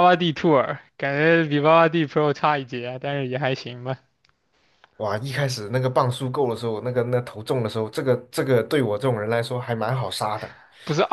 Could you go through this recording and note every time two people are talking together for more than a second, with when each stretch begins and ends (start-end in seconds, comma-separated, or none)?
none